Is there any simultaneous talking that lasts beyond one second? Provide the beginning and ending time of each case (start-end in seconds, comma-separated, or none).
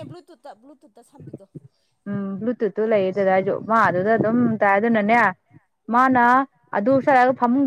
none